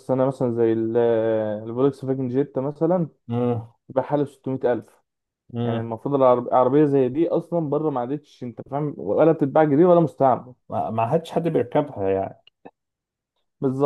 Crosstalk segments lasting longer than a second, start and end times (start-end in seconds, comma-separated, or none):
none